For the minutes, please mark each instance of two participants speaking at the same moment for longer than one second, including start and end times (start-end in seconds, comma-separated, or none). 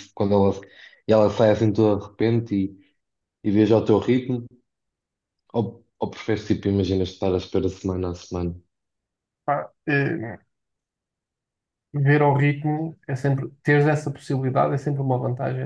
none